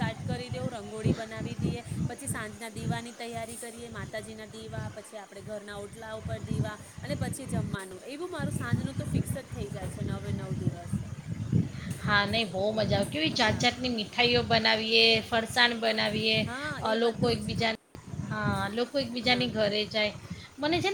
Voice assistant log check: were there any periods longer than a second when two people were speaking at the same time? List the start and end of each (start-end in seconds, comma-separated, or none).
none